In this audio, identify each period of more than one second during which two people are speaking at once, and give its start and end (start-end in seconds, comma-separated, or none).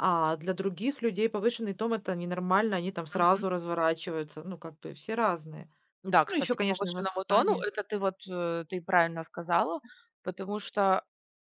6.3-7.6